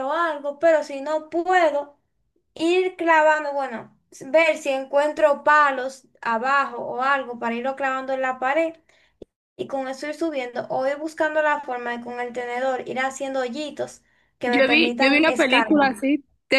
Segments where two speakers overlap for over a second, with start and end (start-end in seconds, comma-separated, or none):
14.4-15.9